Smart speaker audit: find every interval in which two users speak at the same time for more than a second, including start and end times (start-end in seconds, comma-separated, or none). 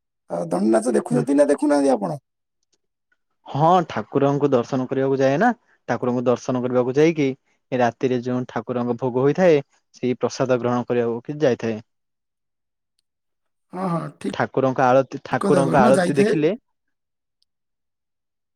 14.3-16.4